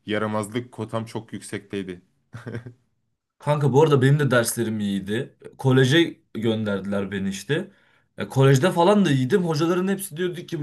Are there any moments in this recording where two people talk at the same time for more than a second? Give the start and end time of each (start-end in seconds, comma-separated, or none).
none